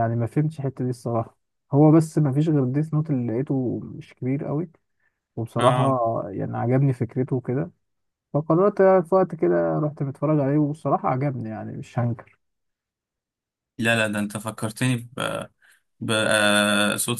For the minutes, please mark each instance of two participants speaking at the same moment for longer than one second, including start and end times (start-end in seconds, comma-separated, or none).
none